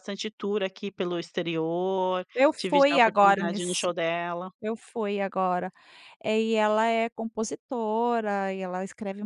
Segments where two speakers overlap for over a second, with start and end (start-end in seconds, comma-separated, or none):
2.3-3.9